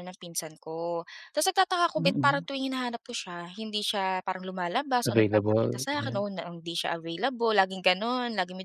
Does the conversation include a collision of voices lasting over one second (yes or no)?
yes